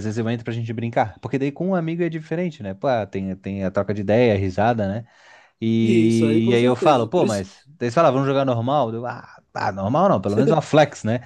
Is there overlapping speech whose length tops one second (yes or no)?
yes